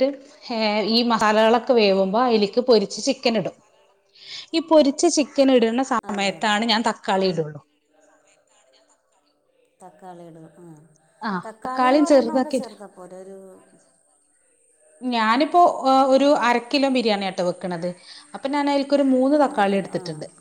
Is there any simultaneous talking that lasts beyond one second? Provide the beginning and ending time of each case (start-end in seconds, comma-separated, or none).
none